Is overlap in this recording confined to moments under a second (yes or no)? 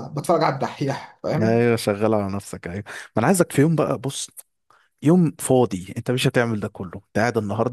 yes